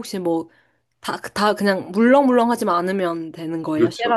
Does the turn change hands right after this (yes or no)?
yes